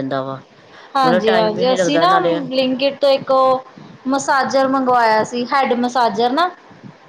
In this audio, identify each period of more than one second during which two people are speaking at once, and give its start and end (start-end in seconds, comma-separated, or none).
1.0-2.4